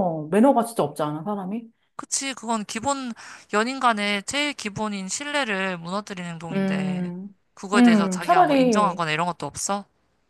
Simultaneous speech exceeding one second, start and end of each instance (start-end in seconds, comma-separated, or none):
7.7-9.0